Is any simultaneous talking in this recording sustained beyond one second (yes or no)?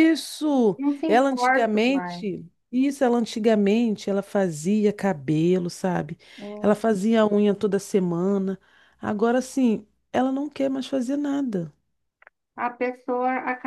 yes